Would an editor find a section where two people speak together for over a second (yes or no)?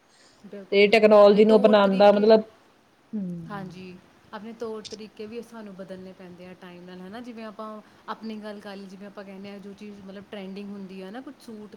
yes